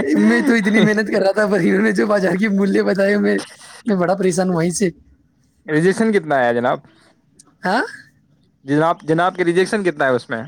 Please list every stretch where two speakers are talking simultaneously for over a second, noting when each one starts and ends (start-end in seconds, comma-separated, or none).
none